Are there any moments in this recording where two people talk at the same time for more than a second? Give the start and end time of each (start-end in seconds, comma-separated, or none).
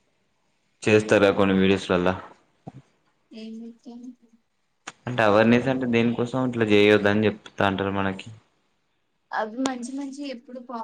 none